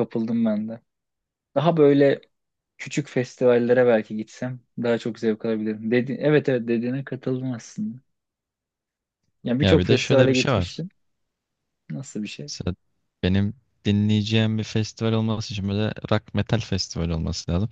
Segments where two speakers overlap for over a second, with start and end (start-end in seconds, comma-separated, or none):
9.6-10.8